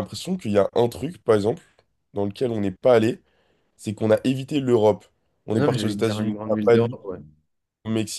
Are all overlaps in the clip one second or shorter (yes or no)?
no